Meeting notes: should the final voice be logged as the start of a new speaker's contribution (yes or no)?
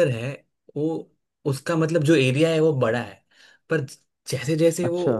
no